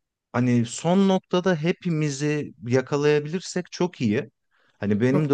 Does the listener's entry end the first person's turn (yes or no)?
no